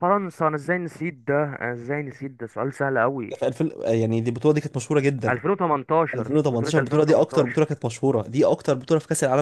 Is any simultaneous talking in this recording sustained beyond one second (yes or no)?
yes